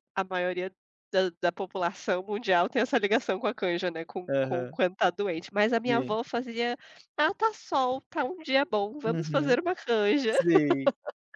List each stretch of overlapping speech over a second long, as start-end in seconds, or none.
none